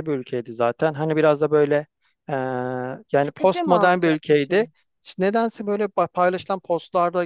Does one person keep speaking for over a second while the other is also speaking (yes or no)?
yes